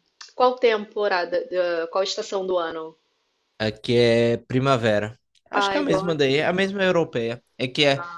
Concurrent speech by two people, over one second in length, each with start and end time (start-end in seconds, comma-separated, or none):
5.5-6.7